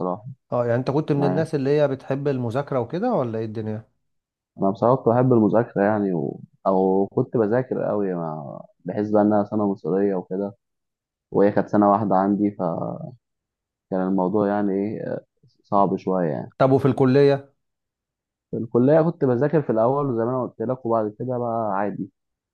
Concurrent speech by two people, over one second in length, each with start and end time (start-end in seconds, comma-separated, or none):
none